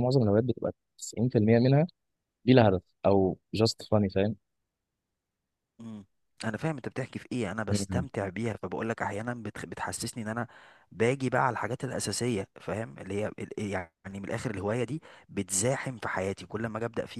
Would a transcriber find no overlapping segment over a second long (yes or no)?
yes